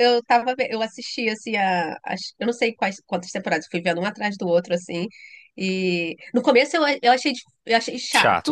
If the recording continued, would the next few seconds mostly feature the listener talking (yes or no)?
yes